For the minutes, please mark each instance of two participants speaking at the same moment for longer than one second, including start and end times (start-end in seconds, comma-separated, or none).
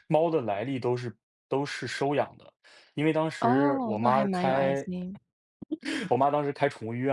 3.4-4.9